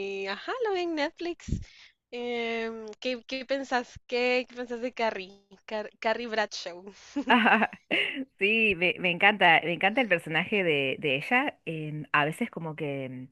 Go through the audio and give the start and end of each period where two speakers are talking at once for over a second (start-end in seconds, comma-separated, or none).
none